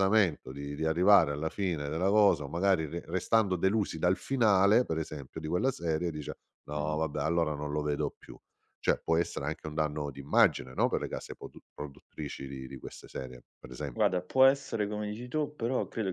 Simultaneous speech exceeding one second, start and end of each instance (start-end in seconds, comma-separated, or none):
none